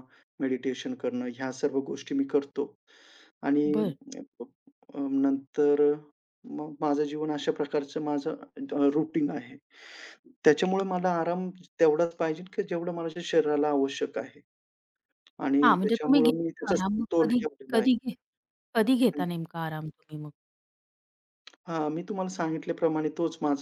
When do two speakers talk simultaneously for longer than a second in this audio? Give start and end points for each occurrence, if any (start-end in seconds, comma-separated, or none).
15.6-17.9